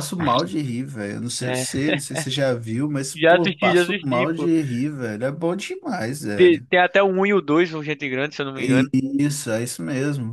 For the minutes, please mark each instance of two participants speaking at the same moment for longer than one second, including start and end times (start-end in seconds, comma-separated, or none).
3.1-4.5